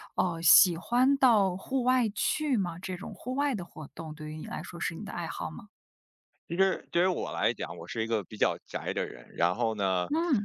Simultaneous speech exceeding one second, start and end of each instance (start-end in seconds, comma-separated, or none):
none